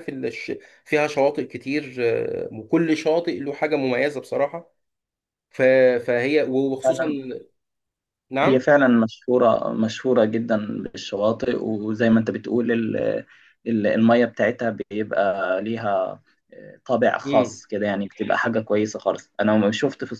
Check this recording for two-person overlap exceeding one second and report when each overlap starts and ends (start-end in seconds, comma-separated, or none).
none